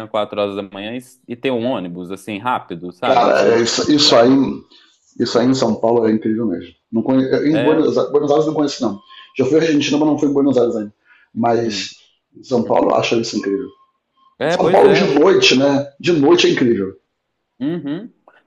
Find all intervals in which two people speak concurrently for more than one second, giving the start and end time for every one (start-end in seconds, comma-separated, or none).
3.0-4.3